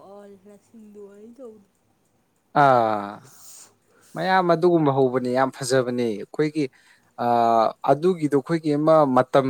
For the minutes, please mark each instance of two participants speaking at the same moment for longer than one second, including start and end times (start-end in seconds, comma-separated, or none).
none